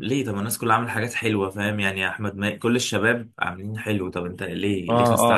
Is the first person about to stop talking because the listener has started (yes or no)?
yes